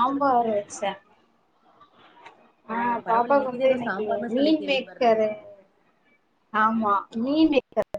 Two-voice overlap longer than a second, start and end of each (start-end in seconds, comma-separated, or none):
2.7-5.1